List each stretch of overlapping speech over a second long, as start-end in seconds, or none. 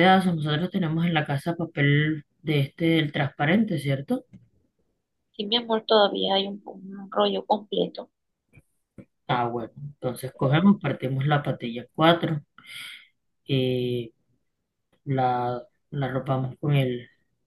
none